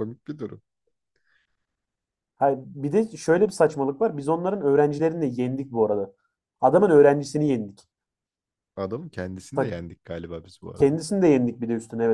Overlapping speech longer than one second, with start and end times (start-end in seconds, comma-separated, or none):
none